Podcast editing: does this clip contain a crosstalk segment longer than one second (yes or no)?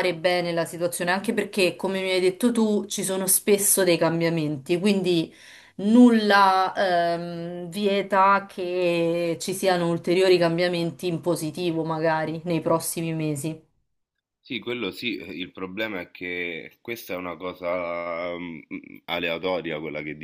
no